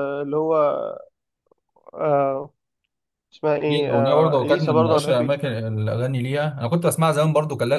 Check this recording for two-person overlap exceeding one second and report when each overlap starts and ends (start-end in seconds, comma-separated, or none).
3.7-5.5